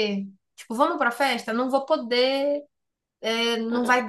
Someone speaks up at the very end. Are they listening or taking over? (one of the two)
listening